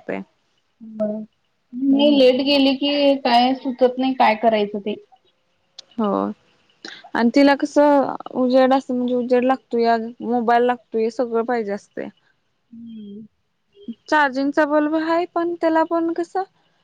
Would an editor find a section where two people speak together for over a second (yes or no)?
no